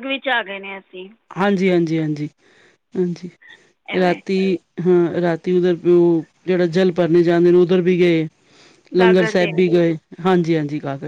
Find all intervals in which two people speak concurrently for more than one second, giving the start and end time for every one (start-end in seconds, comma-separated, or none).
none